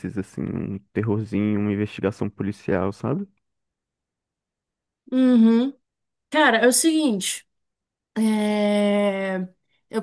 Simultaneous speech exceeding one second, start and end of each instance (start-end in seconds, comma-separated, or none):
none